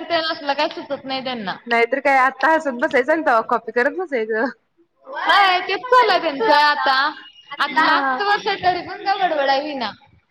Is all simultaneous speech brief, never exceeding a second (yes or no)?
yes